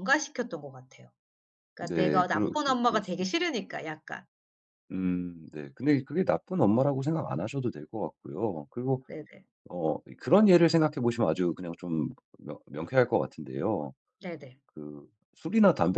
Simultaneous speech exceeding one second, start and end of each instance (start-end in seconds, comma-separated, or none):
1.8-3.6